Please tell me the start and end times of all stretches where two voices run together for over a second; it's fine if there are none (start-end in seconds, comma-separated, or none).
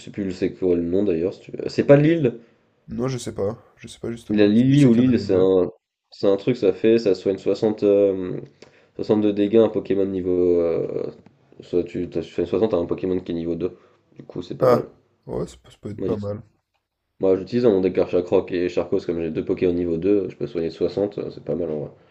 4.3-5.5